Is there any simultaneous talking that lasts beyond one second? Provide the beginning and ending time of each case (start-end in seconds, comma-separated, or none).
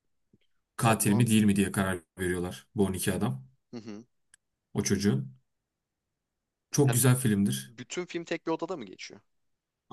none